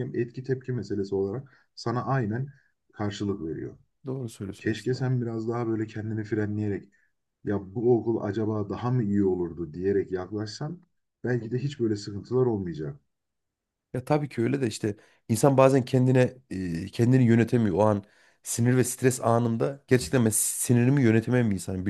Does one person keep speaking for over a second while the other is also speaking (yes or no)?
no